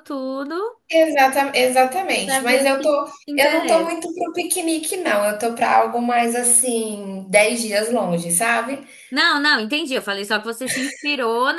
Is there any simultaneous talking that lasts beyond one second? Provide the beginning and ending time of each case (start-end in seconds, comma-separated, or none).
2.2-3.9